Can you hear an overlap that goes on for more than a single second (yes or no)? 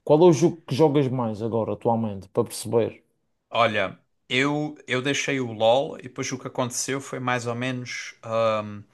no